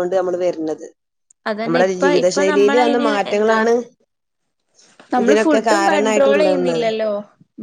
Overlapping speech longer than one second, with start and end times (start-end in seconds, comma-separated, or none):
1.6-3.6, 5.2-6.8